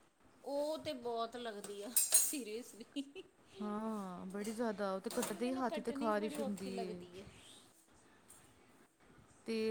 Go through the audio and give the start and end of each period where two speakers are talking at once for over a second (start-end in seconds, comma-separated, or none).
5.4-6.7